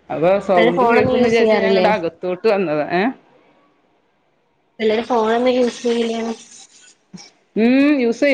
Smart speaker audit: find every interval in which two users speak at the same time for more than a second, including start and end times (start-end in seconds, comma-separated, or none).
0.6-1.9